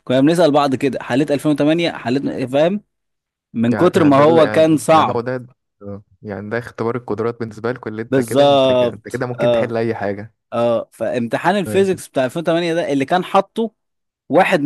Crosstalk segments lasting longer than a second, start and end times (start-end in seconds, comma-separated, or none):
3.7-5.2, 8.1-9.7